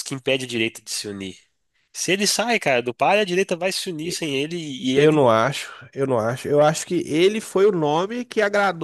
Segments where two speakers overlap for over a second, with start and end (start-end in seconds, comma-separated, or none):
none